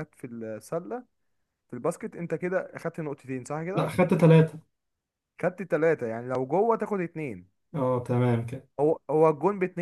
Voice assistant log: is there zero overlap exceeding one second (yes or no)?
yes